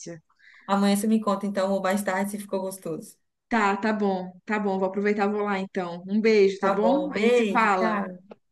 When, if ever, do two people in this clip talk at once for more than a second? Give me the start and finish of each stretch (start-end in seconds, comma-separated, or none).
6.6-8.0